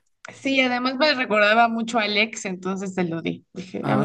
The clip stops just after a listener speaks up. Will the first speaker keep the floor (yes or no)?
no